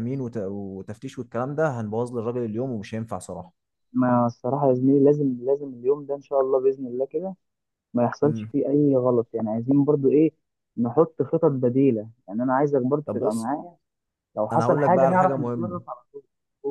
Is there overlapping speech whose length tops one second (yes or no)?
yes